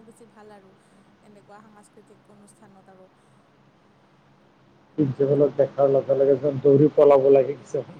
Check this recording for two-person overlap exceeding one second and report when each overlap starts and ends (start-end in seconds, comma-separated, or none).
none